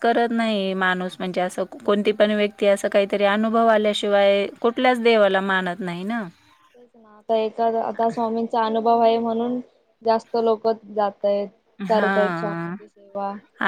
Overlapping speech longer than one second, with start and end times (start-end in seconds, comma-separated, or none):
none